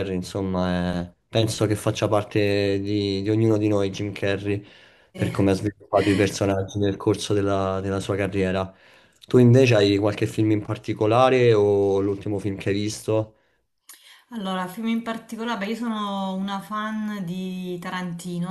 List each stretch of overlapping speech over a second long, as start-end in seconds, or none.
none